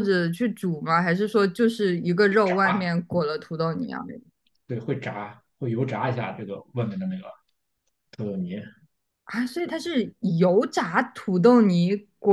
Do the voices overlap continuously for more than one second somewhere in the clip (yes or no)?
no